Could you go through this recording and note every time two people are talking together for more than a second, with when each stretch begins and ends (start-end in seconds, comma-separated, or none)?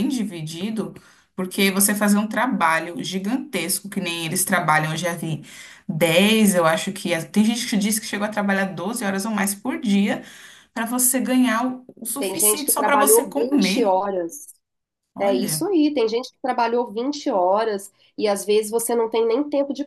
12.2-14.0